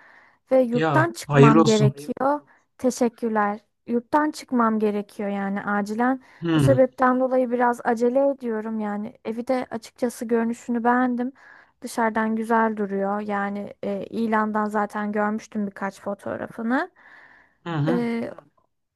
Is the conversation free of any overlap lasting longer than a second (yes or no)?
no